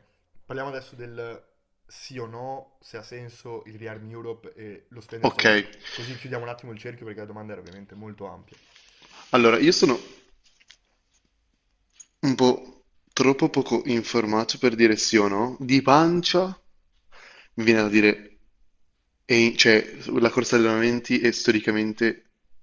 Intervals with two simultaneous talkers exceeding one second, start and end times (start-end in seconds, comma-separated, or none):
none